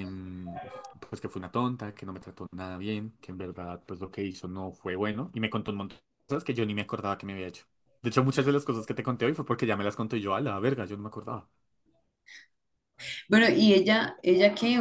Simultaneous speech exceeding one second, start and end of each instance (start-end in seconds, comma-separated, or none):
none